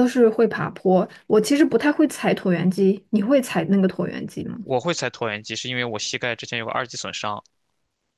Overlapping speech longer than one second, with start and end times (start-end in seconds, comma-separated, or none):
none